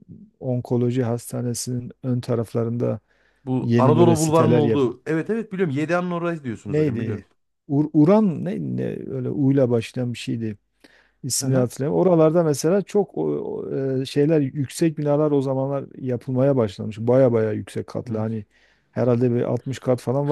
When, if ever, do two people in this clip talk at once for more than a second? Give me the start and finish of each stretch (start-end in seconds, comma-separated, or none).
3.6-4.8